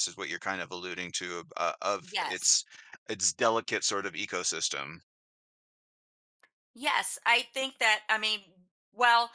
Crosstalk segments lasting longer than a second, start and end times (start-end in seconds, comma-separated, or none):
none